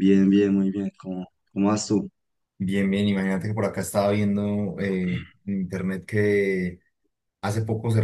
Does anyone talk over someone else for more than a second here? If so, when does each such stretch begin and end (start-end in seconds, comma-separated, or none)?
none